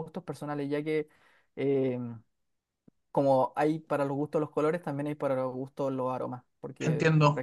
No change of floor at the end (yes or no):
no